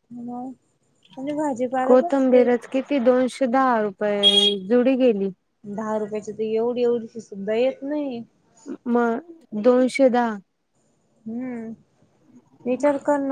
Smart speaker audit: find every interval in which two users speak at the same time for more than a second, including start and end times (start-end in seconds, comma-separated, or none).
none